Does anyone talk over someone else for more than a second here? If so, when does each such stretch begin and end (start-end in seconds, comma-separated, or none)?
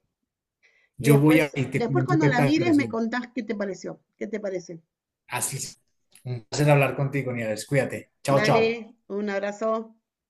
1.0-2.9